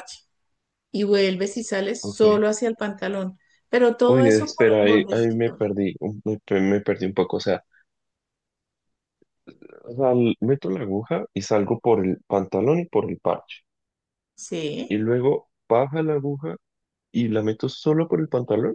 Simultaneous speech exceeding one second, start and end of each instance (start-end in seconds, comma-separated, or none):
4.0-5.6